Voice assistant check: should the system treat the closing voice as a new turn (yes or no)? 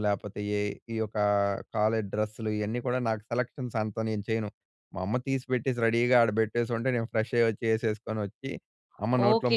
yes